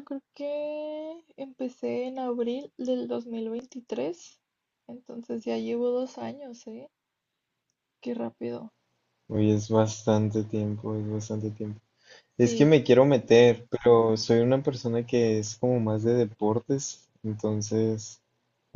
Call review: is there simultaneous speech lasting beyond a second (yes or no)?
no